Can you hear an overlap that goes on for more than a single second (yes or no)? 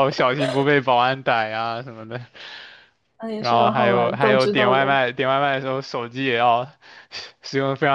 yes